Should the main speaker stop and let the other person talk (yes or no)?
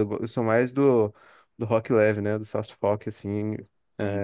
no